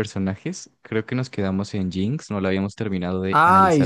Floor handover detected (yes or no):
yes